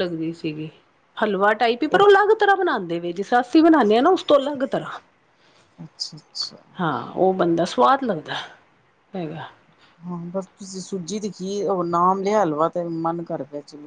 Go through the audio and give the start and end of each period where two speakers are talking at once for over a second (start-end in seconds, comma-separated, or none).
none